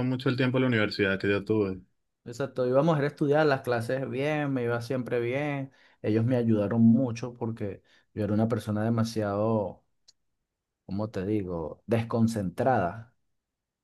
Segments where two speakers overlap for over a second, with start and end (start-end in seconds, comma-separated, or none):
none